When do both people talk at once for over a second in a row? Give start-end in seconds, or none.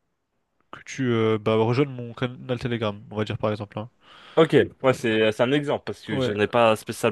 none